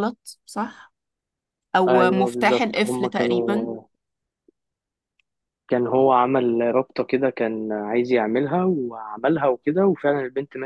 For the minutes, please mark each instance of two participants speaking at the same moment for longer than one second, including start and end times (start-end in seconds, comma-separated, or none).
1.9-3.7